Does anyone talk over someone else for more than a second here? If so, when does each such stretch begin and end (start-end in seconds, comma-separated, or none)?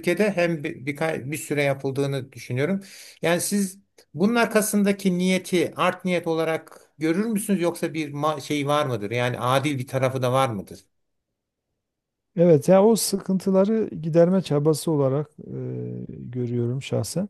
none